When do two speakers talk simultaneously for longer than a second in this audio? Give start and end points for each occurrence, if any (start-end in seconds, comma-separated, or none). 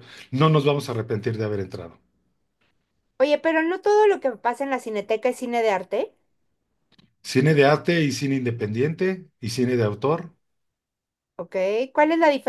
none